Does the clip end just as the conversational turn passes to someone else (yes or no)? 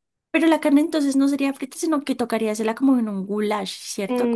yes